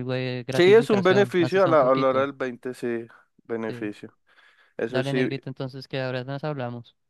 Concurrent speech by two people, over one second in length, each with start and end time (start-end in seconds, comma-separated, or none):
0.5-2.3